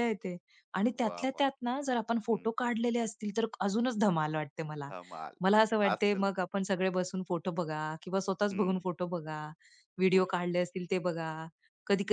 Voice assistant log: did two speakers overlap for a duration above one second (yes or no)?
no